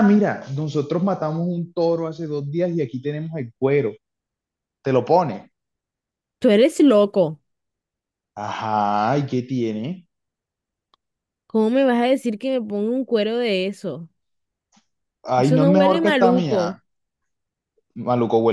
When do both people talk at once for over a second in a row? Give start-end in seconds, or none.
15.4-16.8